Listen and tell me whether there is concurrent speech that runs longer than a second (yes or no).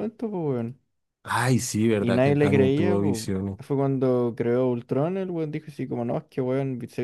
yes